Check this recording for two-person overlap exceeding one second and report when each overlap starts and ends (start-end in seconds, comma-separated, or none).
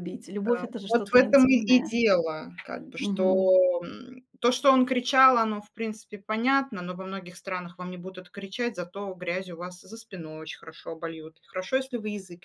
0.6-2.0